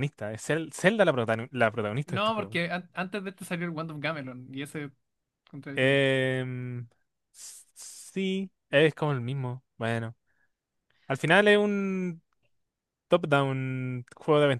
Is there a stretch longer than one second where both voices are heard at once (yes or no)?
no